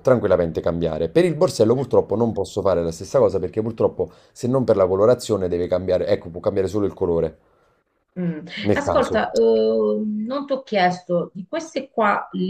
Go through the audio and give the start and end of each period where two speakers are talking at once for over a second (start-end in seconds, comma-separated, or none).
none